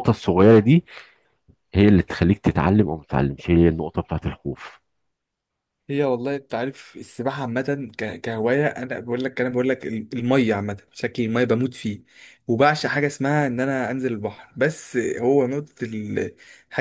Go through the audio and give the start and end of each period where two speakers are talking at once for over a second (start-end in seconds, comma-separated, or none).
none